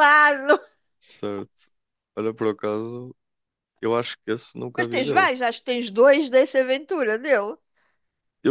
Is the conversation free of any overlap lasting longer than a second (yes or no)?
yes